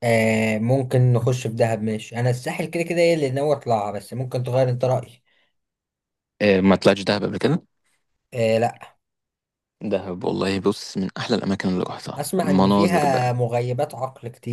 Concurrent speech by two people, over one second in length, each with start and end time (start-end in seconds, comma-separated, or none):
12.2-13.4